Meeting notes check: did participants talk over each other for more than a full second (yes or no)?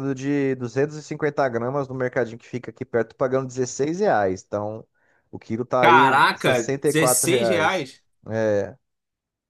yes